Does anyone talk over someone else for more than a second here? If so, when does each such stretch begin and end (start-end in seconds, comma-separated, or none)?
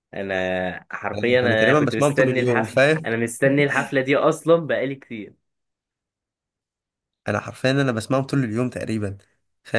1.1-3.1